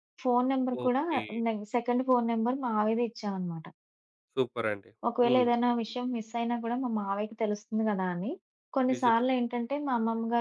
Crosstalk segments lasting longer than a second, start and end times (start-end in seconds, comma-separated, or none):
none